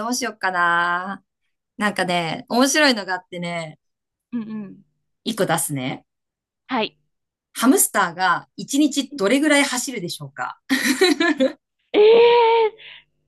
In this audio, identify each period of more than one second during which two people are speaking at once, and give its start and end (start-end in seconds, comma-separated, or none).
none